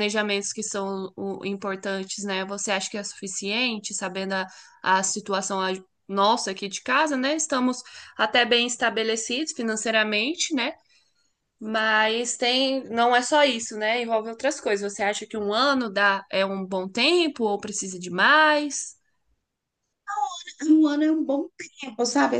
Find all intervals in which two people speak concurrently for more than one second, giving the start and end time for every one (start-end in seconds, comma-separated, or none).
none